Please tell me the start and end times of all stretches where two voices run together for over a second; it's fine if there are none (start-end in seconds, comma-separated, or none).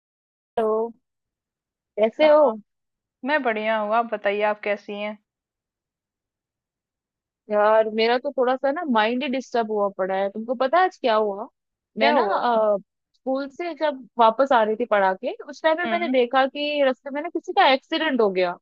none